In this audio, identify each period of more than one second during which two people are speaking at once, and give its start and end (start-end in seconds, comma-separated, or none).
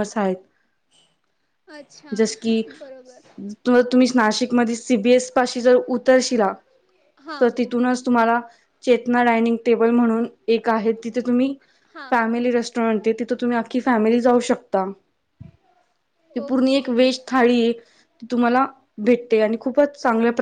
none